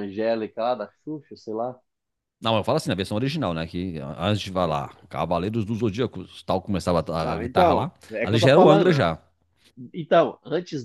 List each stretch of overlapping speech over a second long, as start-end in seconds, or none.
7.2-9.0